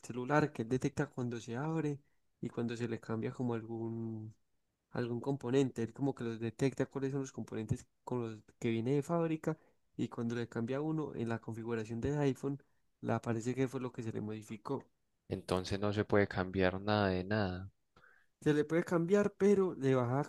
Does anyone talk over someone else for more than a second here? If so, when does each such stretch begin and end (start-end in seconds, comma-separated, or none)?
none